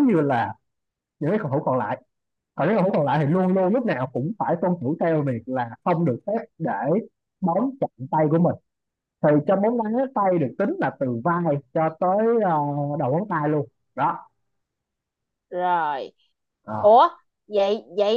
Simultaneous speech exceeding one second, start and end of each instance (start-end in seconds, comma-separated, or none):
none